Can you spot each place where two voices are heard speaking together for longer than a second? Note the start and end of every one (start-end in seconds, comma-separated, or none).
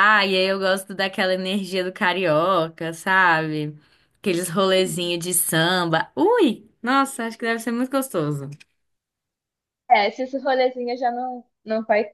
none